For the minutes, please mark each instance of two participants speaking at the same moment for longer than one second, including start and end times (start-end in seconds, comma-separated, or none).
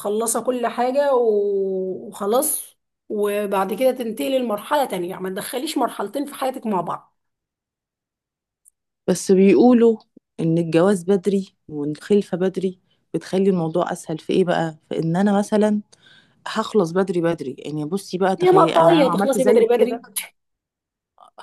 18.4-20.0